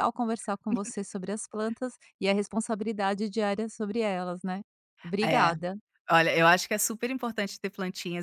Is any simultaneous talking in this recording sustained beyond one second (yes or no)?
no